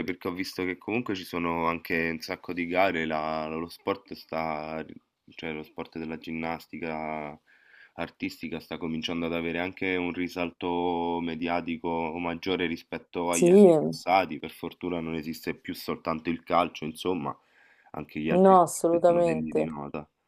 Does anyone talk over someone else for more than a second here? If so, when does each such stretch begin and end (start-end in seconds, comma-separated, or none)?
18.3-19.7